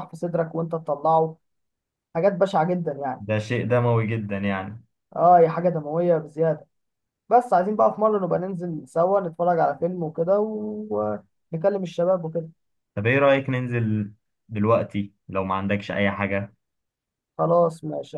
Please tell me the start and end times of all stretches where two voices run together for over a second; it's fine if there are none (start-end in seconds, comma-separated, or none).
none